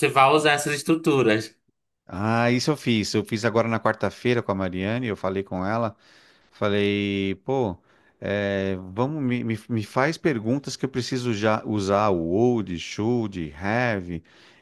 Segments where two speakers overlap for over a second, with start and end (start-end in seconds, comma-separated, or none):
none